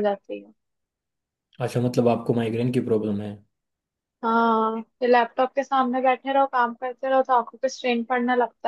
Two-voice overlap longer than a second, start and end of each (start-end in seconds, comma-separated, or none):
none